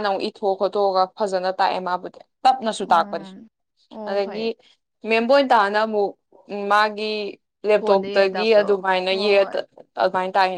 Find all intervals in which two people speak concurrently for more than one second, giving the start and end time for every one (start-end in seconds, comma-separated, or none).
7.8-9.5